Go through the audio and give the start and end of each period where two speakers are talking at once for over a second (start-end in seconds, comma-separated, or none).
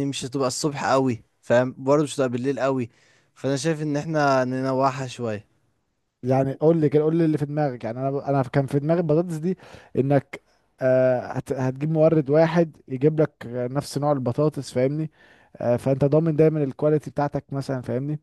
none